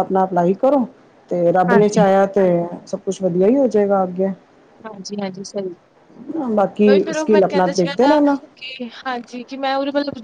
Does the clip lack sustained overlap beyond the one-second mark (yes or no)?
no